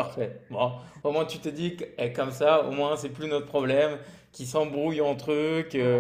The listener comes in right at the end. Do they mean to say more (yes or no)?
no